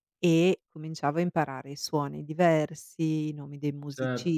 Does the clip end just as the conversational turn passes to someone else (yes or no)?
yes